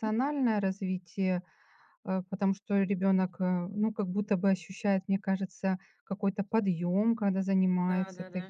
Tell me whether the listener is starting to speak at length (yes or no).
yes